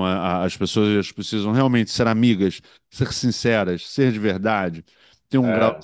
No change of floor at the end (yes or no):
yes